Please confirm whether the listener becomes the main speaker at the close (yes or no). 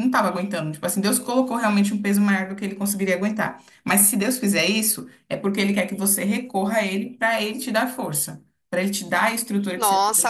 yes